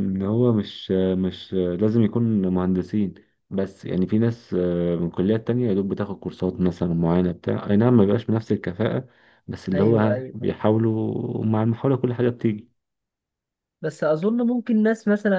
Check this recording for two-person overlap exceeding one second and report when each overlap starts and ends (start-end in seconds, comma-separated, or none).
none